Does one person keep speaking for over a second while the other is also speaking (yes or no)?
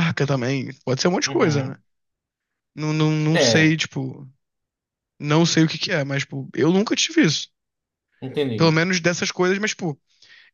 no